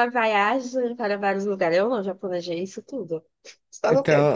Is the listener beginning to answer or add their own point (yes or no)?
yes